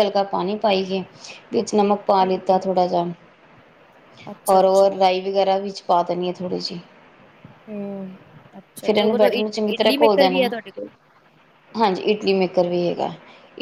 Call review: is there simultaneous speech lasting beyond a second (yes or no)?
yes